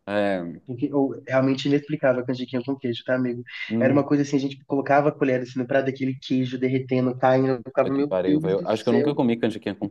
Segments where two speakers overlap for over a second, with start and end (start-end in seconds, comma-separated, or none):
7.6-9.2